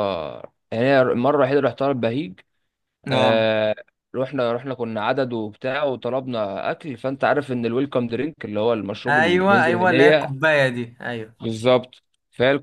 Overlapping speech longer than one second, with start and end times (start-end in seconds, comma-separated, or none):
9.1-10.3